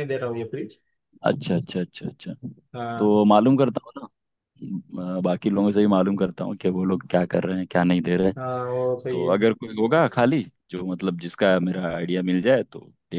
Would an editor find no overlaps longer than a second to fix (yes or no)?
yes